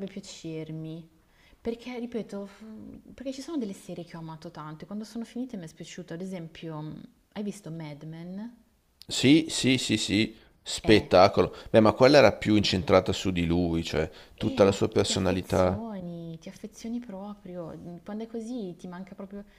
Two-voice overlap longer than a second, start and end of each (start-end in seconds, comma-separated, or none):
14.4-15.8